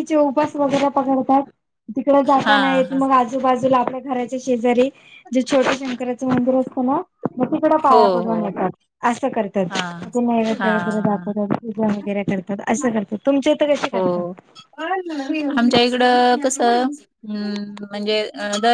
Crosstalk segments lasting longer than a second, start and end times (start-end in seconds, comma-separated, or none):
none